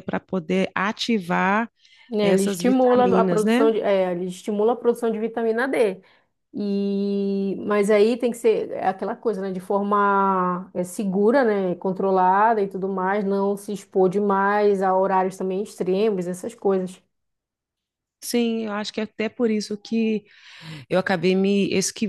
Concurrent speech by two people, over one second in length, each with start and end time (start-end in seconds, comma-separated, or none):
2.2-3.7